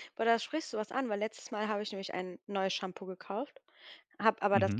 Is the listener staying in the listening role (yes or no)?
yes